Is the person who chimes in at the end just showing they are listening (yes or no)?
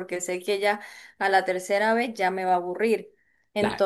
yes